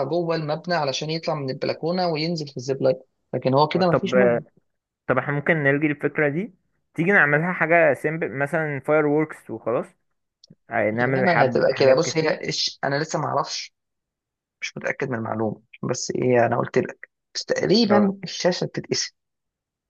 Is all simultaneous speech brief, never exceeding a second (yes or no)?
no